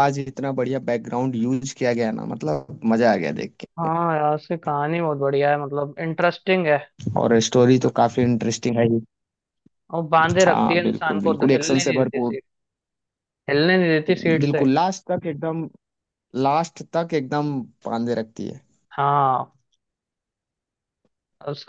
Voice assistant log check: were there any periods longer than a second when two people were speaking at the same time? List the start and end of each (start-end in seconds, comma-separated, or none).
10.5-12.3